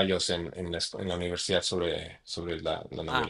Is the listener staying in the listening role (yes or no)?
no